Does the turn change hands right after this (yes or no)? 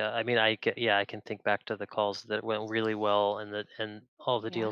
no